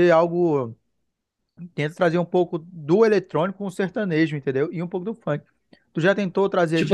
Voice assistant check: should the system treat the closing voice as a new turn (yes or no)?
yes